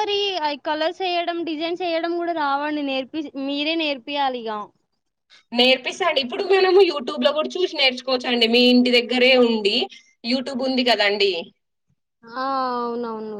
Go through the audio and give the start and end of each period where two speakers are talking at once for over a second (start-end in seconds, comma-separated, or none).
none